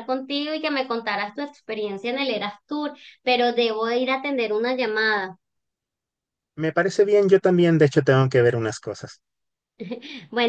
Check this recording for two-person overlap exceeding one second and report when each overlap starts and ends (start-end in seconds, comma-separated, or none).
none